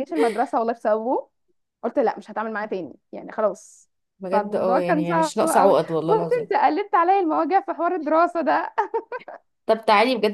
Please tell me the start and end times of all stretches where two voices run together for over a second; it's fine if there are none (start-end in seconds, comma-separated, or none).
4.3-6.5